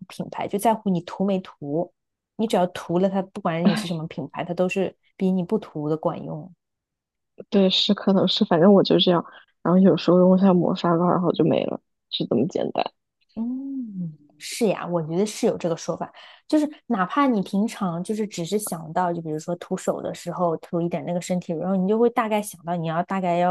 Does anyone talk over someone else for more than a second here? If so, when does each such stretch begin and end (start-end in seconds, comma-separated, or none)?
none